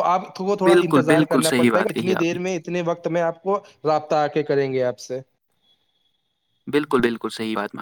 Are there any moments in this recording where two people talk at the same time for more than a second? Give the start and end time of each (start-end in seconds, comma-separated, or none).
0.6-2.4